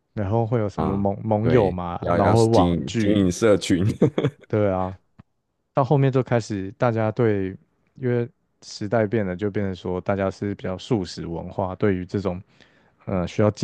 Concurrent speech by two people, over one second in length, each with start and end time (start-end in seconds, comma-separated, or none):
0.8-3.3